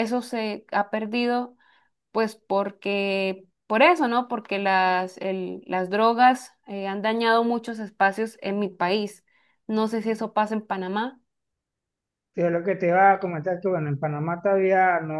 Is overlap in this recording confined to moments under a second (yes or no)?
yes